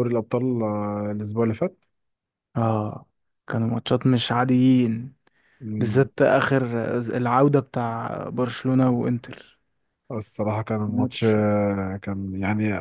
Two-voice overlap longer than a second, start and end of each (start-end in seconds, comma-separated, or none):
none